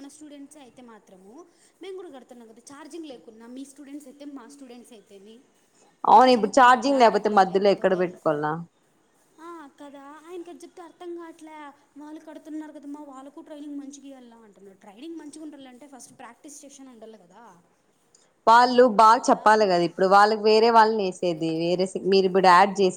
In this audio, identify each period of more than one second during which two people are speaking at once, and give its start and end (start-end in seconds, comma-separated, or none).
6.2-8.0